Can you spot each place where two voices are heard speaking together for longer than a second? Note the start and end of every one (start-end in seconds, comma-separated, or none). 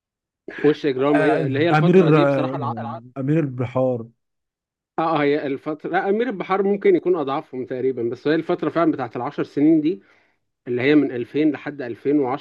1.1-2.6